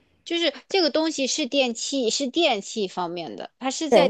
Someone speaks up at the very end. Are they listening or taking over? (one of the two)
taking over